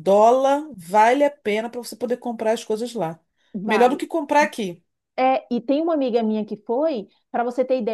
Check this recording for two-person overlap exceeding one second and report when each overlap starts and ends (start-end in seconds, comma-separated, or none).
none